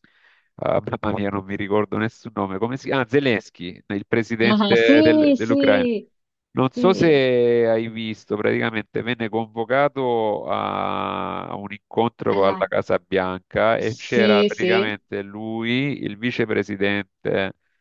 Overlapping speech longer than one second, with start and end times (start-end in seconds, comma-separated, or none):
4.5-5.9, 13.8-15.0